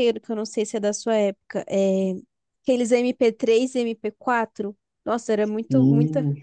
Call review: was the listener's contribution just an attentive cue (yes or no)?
yes